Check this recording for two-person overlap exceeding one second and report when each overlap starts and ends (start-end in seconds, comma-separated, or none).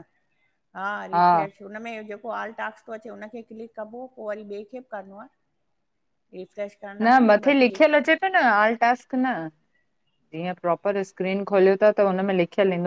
none